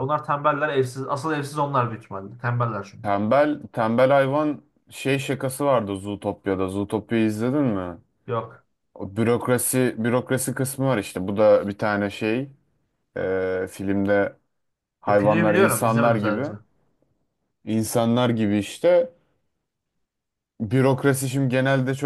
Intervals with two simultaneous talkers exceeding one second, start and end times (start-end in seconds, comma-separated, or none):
15.2-16.4